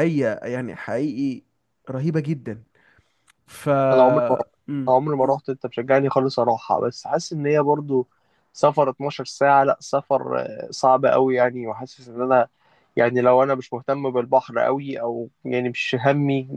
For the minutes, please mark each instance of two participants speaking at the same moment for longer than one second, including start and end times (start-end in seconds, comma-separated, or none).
none